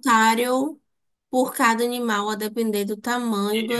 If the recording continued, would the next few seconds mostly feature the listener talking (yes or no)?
yes